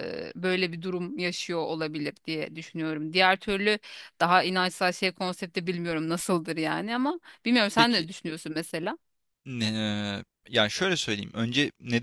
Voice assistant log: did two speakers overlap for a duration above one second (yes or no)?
no